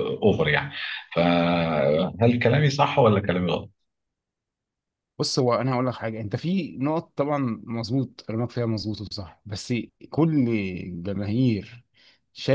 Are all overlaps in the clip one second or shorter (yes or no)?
yes